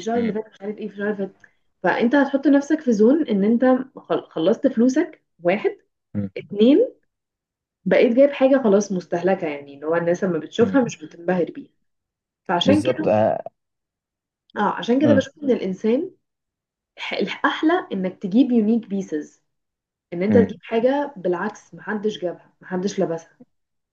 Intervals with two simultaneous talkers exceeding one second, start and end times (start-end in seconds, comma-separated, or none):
none